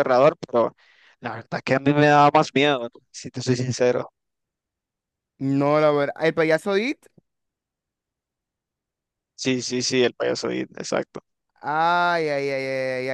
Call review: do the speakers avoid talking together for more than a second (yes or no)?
yes